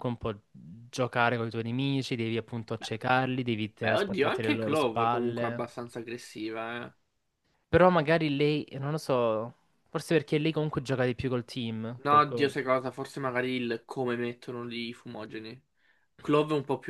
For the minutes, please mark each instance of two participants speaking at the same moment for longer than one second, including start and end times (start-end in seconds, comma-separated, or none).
3.8-5.6